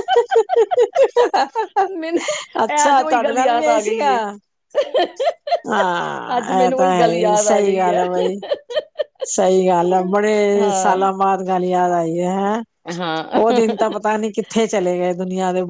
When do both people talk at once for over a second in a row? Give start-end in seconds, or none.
2.7-4.1, 6.4-8.0